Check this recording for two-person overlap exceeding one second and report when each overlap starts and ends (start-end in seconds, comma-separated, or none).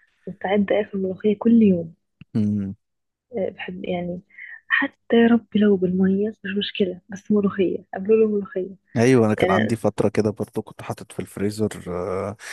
none